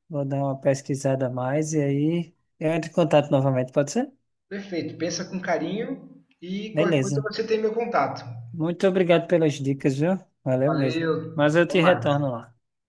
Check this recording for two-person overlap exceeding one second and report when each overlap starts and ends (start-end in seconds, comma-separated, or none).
10.6-12.2